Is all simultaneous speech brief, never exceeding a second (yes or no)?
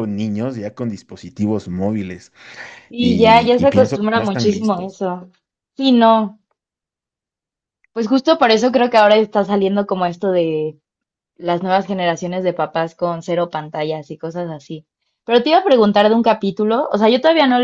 no